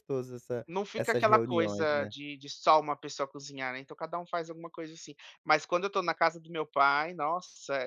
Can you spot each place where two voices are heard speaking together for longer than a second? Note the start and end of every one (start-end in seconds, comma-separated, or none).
0.7-2.1